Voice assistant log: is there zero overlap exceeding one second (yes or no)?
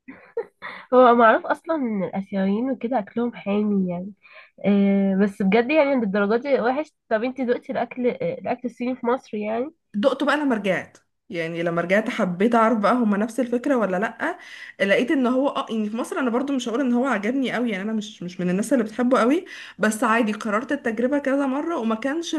yes